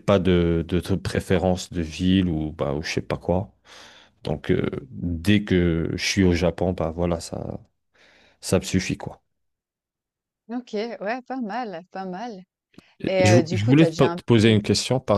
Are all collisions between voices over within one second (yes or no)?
no